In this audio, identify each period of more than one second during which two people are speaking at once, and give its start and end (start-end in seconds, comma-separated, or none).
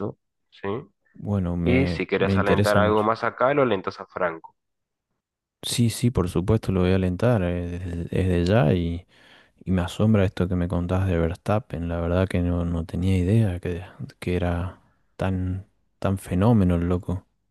1.6-3.1